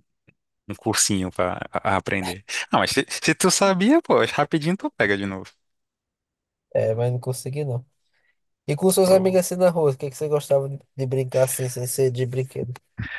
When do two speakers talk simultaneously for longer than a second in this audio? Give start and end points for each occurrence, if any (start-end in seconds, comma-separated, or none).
none